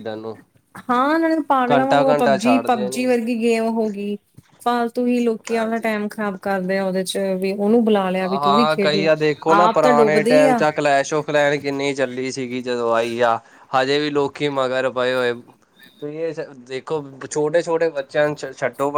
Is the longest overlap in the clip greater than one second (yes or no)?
yes